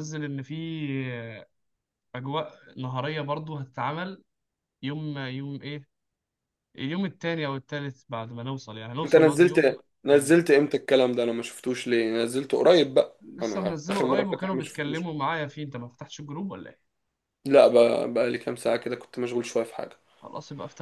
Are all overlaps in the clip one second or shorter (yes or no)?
no